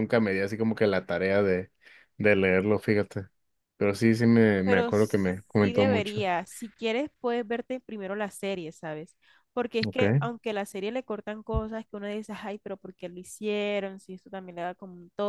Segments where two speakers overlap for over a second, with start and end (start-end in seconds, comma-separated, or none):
4.6-6.2